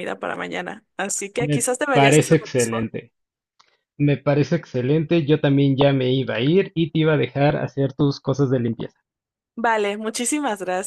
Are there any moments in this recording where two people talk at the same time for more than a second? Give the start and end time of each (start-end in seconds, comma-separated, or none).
1.4-2.8